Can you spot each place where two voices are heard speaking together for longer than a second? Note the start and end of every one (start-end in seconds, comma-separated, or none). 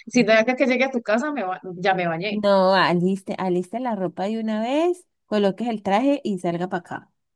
none